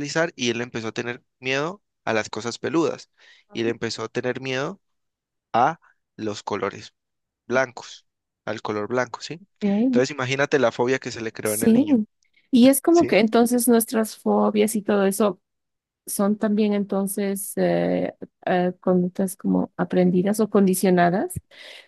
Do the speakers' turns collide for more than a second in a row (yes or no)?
no